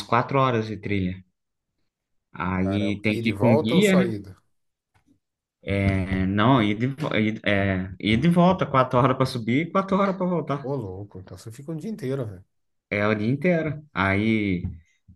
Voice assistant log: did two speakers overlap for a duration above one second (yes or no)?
yes